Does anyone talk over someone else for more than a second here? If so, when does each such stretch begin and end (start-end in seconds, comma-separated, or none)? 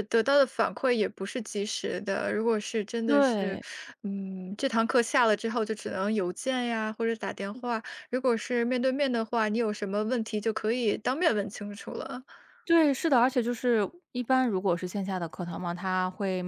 none